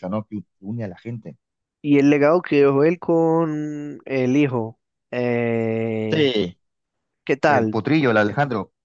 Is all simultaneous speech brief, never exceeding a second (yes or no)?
yes